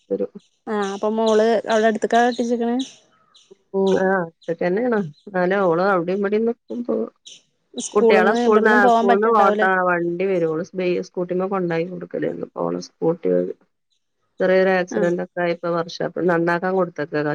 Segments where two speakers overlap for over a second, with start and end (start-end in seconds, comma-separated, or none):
8.0-9.7